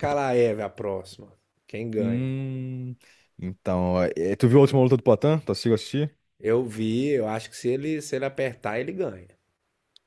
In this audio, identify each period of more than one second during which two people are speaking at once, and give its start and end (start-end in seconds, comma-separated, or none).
none